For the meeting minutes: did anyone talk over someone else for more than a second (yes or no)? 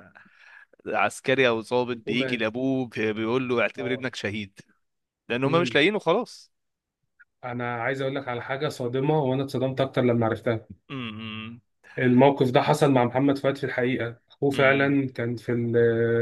no